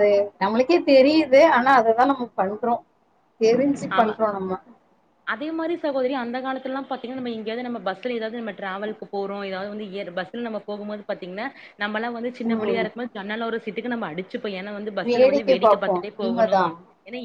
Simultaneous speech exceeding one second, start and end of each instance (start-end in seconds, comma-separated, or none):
15.1-16.6